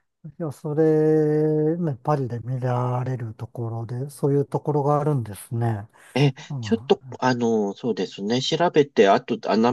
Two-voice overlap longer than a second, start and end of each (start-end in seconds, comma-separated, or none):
none